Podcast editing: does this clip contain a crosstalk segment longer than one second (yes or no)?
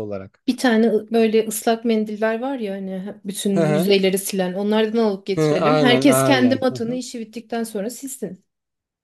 yes